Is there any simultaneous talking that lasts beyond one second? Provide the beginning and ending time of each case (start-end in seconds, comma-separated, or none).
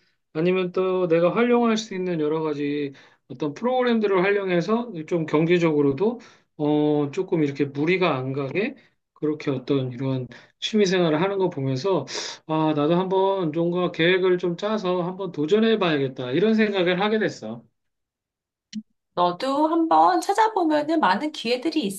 none